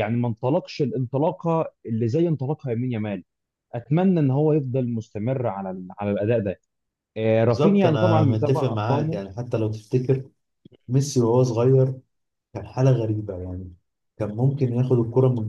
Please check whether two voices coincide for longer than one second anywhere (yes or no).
yes